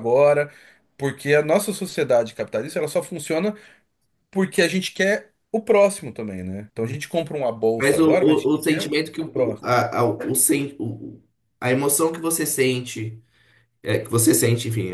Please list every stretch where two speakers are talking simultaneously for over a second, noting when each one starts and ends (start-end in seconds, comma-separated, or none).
7.8-9.7